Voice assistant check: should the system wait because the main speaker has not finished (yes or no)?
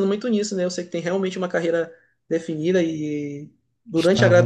yes